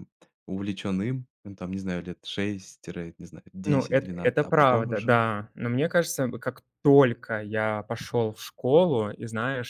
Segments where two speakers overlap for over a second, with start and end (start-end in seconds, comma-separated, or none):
3.6-5.2